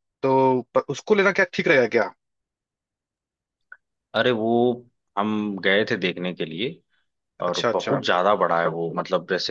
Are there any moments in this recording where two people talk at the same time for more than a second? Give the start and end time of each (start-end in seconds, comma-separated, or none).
none